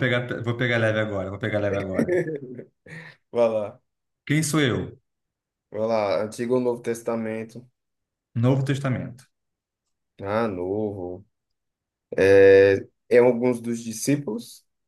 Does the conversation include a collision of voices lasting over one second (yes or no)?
no